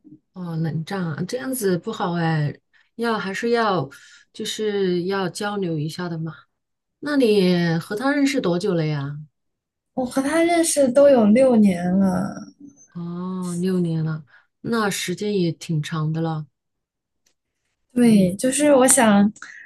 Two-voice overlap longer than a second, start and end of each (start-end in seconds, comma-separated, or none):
none